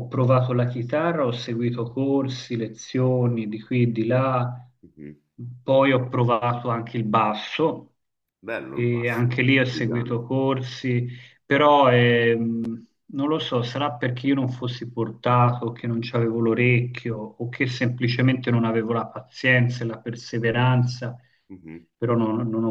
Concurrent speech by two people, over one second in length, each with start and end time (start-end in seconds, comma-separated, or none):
8.7-10.2